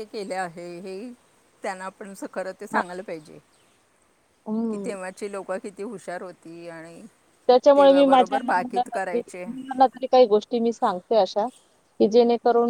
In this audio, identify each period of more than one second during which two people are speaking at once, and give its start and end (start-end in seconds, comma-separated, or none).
7.8-9.4